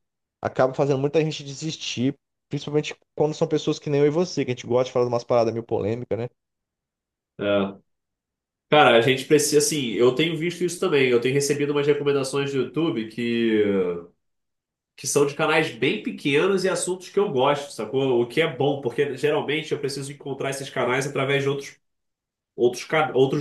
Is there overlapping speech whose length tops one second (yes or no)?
no